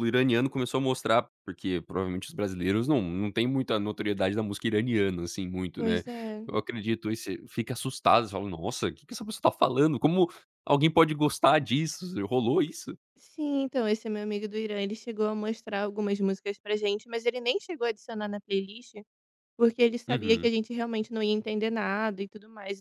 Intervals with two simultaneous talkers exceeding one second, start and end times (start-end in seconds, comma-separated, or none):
none